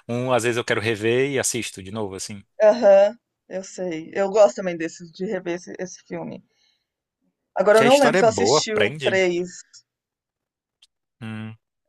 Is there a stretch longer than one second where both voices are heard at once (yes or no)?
yes